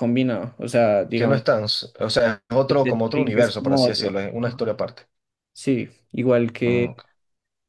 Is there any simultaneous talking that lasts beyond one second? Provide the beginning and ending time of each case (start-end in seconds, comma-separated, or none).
2.7-4.6